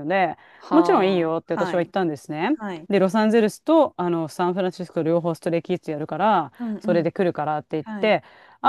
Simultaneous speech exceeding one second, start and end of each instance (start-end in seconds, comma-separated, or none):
0.7-1.9